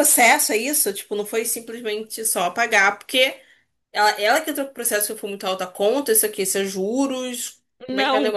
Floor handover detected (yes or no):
yes